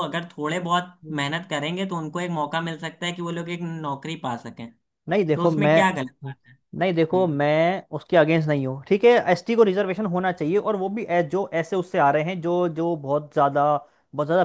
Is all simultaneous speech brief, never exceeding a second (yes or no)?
yes